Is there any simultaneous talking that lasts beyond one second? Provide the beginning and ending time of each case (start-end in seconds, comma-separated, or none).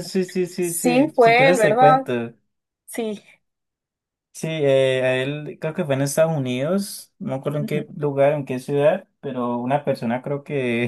0.6-2.0